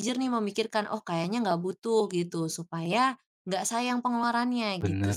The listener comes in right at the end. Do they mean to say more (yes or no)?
yes